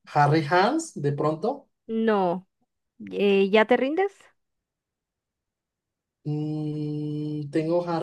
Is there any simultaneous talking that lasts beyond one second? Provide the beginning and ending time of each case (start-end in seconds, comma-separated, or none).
none